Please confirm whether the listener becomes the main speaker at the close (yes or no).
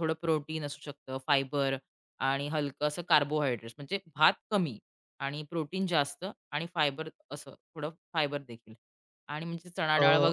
no